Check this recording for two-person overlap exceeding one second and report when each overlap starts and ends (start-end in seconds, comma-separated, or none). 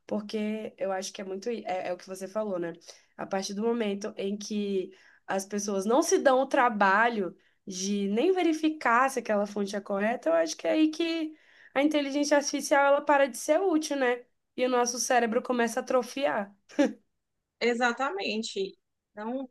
none